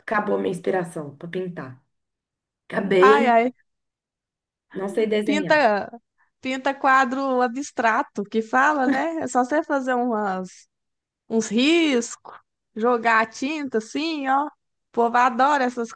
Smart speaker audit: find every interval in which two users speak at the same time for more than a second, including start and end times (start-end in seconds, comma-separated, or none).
none